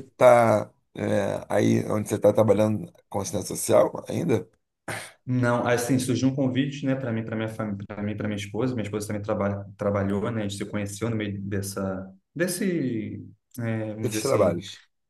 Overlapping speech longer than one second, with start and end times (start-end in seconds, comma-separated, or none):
none